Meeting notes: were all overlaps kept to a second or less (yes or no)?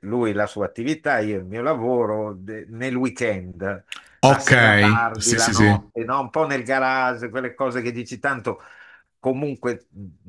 no